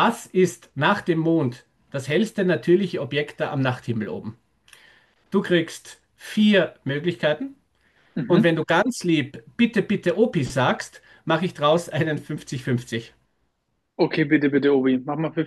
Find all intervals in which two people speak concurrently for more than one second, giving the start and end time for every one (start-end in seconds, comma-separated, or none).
none